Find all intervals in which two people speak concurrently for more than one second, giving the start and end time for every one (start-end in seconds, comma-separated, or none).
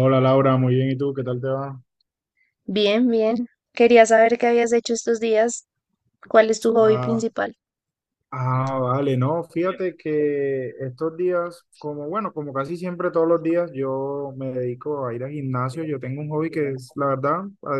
none